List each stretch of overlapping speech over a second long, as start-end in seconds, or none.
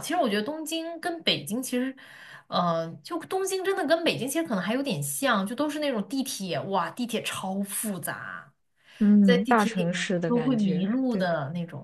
9.2-11.3